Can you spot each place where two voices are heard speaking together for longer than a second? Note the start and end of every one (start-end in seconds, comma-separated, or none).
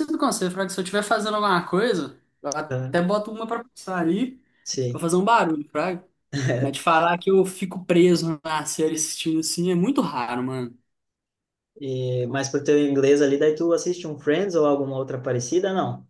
none